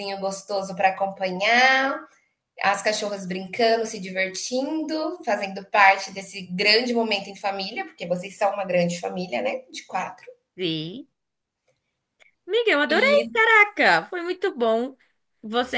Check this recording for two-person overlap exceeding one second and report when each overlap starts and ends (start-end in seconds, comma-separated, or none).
none